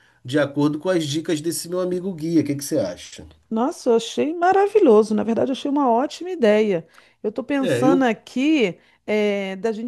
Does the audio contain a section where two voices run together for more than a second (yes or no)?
no